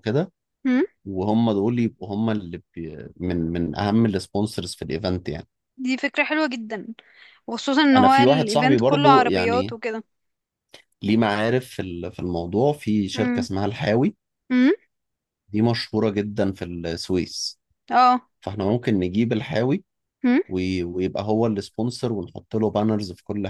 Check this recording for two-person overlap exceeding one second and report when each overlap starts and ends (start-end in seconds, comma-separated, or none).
8.0-9.8